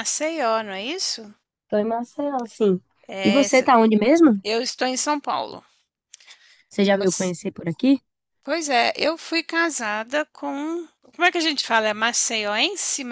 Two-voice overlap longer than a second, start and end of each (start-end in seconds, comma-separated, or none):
none